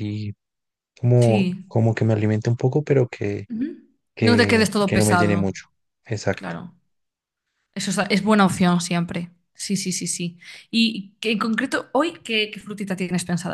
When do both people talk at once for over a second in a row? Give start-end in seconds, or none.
4.2-5.5